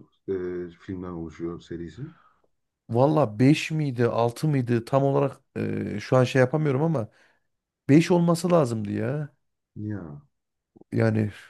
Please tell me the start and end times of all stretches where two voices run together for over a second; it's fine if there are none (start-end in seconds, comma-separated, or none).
none